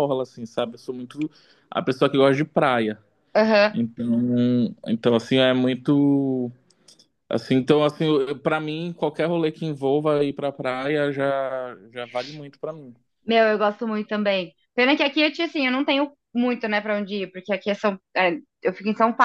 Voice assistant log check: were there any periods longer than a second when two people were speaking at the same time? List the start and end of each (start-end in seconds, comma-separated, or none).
none